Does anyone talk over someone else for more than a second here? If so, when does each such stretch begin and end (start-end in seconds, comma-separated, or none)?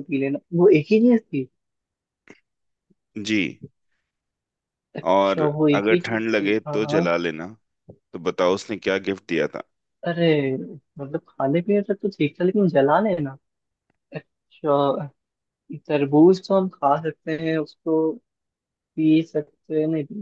5.1-7.0